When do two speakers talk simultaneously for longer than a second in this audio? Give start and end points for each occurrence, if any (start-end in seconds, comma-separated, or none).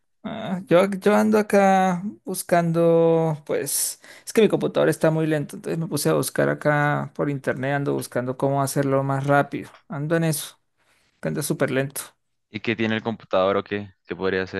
none